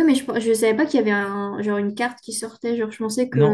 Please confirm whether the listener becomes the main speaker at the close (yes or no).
yes